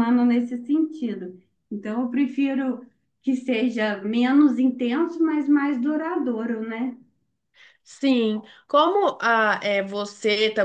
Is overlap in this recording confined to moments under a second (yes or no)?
yes